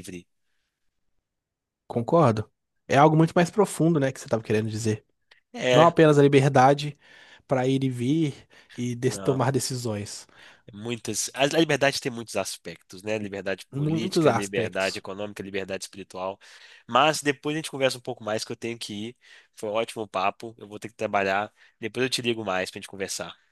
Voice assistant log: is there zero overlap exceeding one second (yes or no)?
no